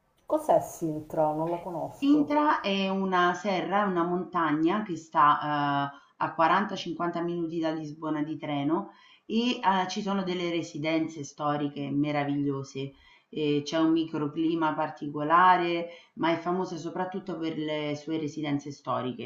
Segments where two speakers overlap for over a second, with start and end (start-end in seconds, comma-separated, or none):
none